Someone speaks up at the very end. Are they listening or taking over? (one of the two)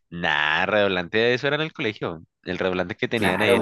taking over